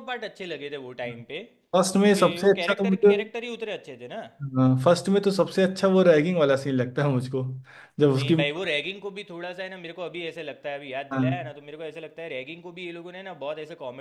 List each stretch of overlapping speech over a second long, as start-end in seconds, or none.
1.8-3.1